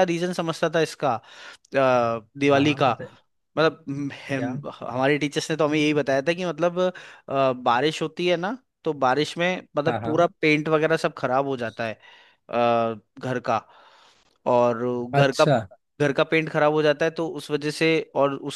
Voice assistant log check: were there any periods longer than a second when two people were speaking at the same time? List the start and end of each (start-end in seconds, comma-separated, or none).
none